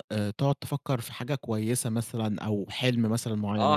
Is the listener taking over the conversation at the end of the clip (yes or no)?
yes